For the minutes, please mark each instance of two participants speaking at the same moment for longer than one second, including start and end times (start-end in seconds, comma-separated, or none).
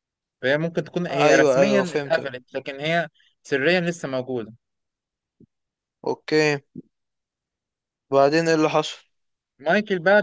1.1-2.3